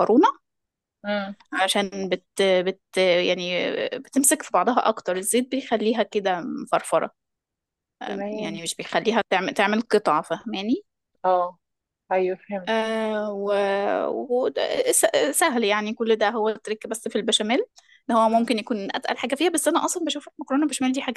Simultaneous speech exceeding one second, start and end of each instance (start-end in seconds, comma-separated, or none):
none